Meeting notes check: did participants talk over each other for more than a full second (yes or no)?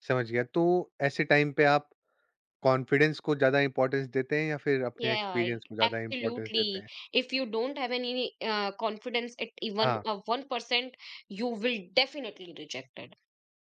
yes